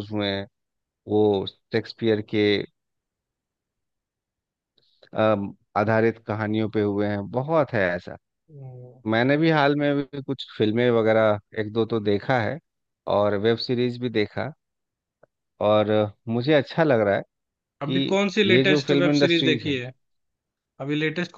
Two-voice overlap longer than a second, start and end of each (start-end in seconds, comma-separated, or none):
17.8-19.8